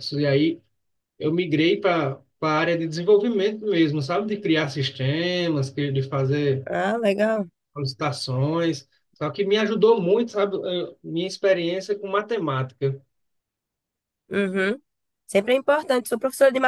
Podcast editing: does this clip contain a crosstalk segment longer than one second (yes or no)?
no